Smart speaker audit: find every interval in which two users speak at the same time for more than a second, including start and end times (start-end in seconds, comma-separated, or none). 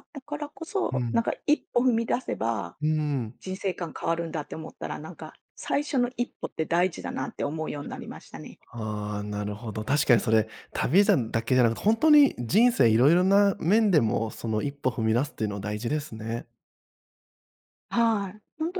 none